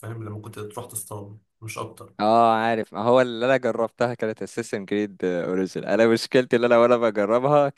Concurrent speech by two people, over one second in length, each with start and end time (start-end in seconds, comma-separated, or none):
none